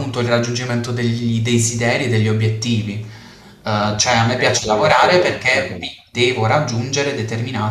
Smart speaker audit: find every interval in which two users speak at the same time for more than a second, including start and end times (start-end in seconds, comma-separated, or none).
3.6-6.0